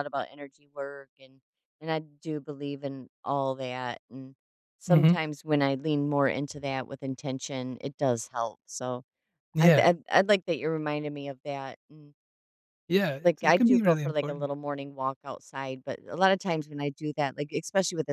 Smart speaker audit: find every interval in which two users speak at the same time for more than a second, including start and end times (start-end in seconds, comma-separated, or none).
13.2-14.5